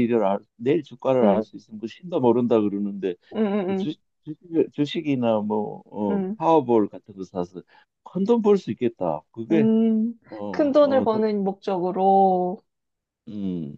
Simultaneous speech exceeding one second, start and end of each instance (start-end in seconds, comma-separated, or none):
none